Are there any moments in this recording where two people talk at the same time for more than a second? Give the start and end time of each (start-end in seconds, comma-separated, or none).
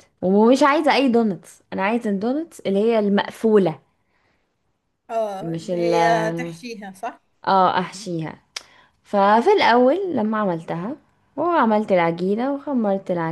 none